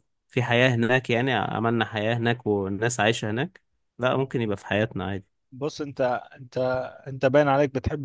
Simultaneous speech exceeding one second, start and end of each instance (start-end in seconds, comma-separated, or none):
none